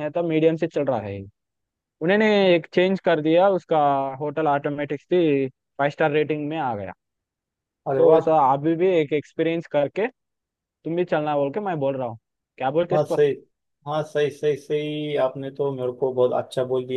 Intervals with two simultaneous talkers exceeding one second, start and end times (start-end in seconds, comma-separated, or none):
none